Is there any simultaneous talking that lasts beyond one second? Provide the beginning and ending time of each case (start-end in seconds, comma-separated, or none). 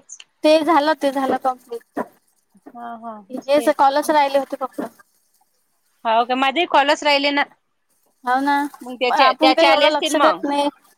9.1-10.4